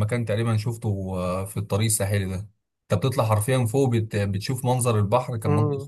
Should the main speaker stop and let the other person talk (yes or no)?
no